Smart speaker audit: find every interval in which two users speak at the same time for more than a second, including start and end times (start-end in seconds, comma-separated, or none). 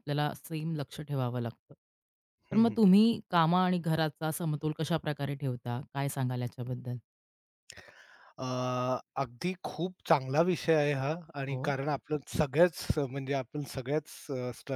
none